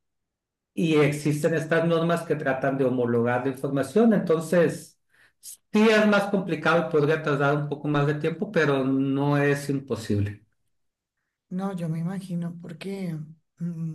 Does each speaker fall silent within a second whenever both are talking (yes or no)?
yes